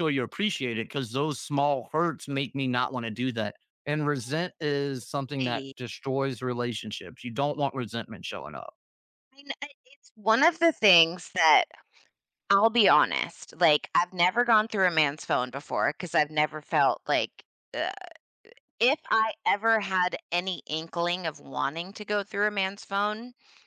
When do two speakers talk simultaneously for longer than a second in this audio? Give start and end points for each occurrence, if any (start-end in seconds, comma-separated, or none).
none